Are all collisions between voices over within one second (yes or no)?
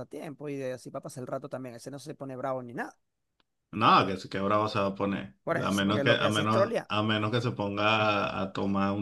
no